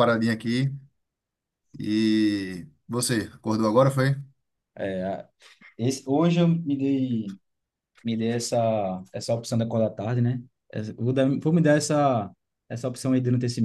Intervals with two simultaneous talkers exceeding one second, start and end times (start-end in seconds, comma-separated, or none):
none